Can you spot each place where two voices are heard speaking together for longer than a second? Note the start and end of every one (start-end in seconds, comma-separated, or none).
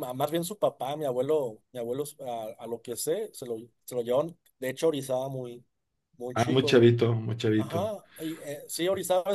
none